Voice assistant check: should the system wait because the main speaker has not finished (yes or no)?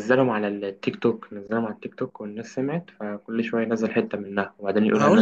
no